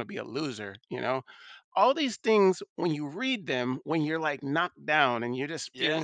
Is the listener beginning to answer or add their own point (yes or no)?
no